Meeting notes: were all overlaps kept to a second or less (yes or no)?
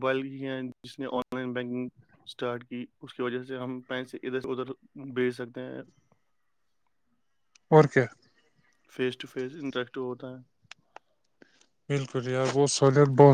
yes